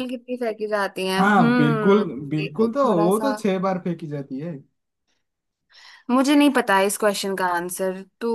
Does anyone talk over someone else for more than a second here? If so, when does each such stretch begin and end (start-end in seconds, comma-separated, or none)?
1.2-3.4